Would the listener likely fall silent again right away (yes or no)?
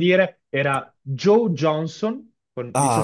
no